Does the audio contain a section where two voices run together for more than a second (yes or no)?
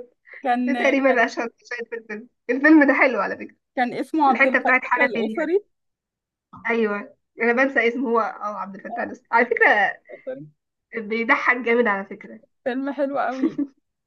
yes